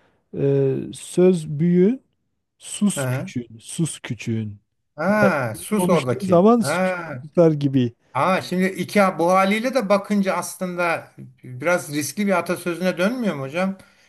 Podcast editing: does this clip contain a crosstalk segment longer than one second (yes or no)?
yes